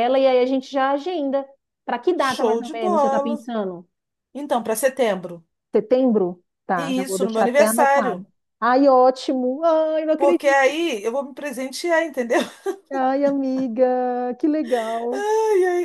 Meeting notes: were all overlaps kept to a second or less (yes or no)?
no